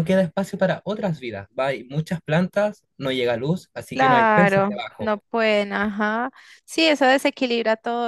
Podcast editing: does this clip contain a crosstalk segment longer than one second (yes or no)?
yes